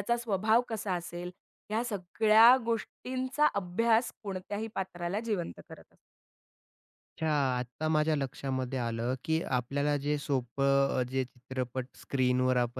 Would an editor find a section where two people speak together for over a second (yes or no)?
no